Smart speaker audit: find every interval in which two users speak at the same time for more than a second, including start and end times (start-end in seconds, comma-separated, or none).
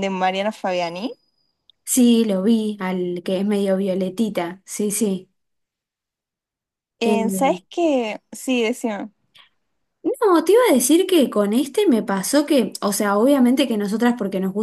none